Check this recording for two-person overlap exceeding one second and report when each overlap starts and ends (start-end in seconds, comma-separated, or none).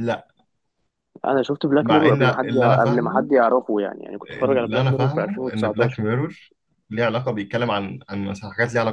1.8-3.3, 4.3-6.0